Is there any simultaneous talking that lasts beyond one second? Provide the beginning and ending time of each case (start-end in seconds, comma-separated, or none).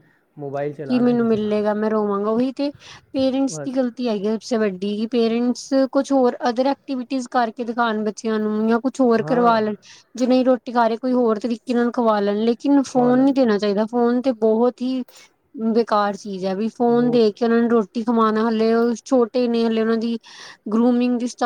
none